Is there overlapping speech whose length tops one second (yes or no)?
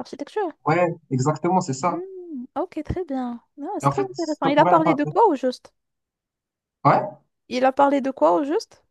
yes